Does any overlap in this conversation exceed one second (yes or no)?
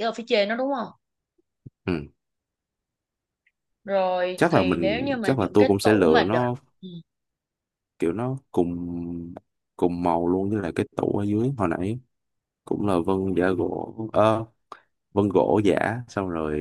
yes